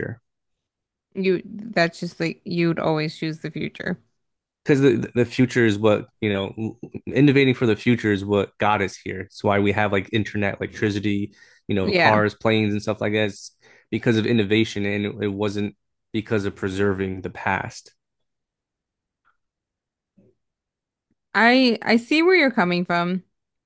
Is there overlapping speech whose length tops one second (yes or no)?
no